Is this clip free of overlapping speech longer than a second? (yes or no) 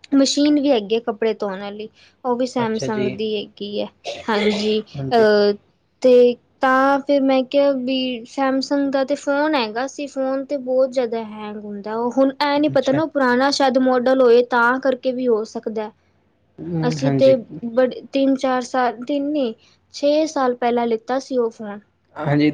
yes